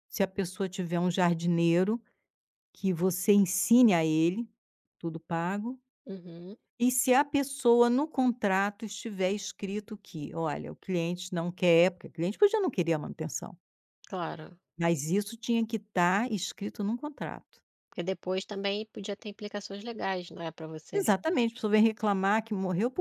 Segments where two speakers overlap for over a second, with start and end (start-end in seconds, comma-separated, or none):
none